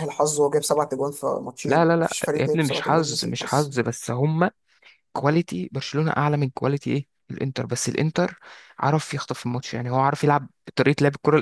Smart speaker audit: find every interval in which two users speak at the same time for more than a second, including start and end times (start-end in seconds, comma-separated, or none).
1.6-3.7